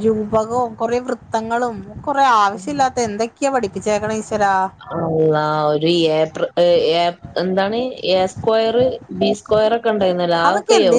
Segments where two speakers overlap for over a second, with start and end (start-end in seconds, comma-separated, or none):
none